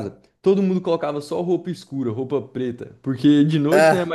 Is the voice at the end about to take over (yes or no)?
no